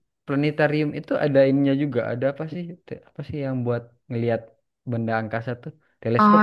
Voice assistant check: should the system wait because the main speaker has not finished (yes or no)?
no